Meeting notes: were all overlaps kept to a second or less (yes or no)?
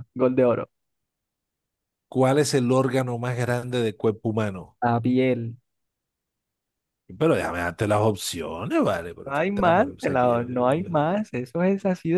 no